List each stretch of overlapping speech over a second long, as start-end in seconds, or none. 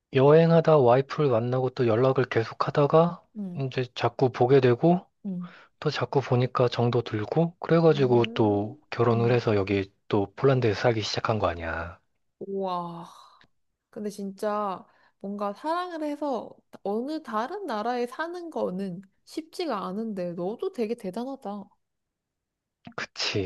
7.9-9.5